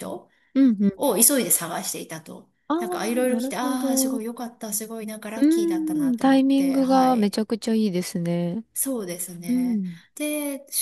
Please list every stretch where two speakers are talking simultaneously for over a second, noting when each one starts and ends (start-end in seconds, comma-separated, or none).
2.7-4.2, 6.1-7.4